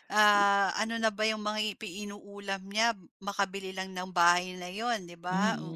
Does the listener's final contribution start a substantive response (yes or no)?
yes